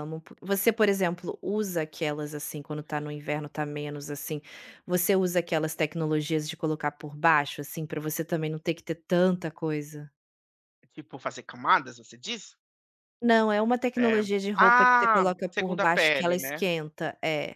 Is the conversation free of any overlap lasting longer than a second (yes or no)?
no